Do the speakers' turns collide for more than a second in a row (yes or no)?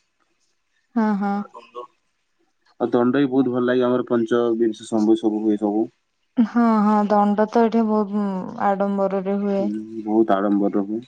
no